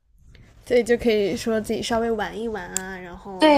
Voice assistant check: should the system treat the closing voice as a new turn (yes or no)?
yes